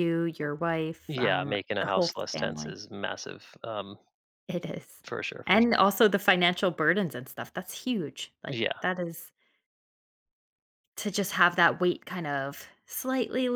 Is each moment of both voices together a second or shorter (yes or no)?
no